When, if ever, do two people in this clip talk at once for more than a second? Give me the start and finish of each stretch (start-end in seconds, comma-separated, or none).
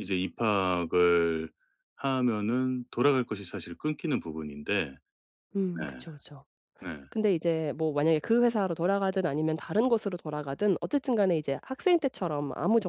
none